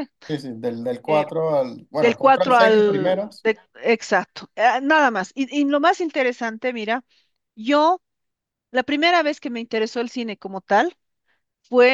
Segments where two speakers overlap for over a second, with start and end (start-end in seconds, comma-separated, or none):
2.0-3.5